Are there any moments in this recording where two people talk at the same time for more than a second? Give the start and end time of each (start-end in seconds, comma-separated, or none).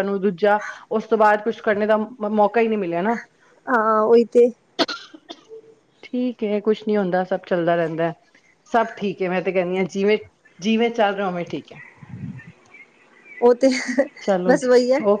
none